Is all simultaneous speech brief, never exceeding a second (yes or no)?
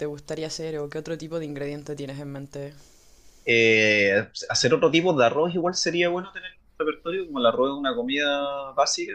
yes